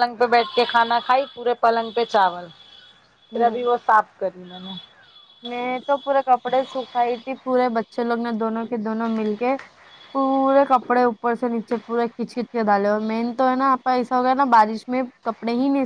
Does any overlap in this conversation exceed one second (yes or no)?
no